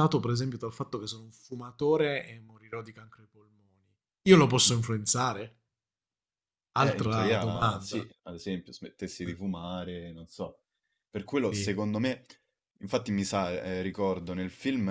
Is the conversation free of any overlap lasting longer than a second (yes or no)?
no